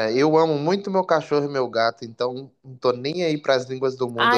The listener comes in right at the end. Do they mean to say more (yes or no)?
yes